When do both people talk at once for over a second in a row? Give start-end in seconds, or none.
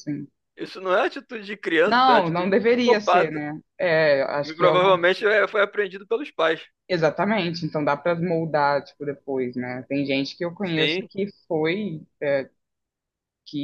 1.8-3.4